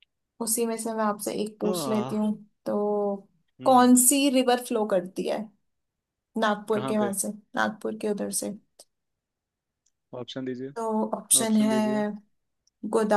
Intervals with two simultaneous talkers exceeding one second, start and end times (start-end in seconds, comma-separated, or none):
none